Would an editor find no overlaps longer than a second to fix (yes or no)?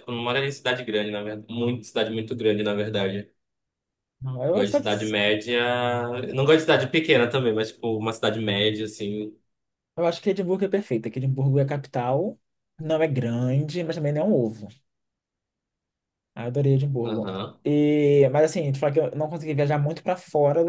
yes